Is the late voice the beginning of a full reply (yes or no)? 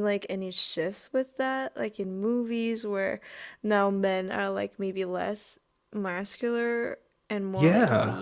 yes